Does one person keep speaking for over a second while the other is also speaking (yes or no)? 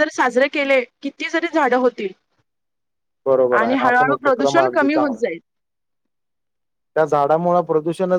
yes